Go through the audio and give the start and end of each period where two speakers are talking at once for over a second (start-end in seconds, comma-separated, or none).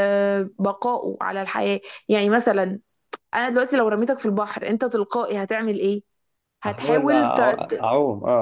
6.7-7.9